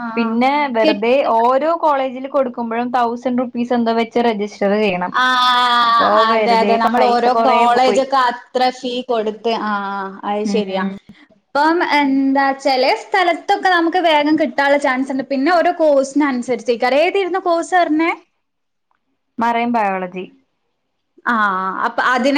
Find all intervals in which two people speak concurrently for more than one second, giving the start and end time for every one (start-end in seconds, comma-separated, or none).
6.3-8.0